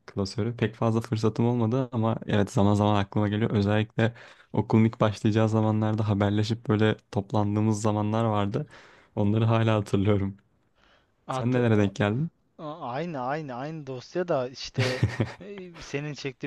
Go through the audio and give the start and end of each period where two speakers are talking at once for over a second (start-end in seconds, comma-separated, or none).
none